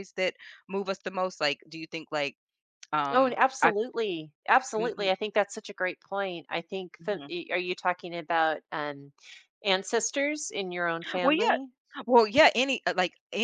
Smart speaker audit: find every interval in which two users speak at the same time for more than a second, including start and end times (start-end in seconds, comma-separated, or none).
none